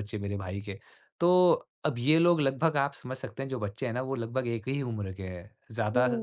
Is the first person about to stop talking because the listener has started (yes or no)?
no